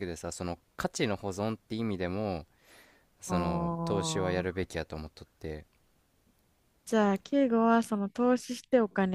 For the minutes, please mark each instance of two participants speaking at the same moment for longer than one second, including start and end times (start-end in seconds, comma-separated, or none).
3.3-4.6